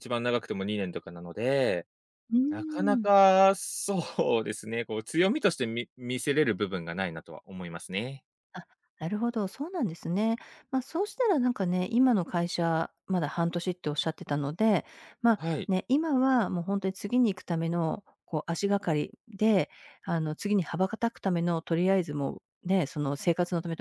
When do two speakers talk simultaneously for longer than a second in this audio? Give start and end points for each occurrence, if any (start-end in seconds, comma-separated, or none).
none